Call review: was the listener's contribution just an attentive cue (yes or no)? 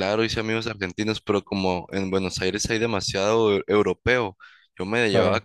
yes